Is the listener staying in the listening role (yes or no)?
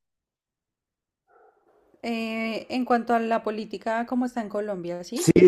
no